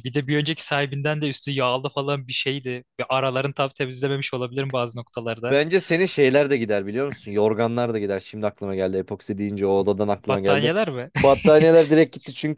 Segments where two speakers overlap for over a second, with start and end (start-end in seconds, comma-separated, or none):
none